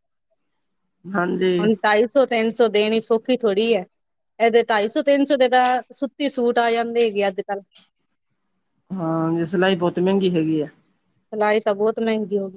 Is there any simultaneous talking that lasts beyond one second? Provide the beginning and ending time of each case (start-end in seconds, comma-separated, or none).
none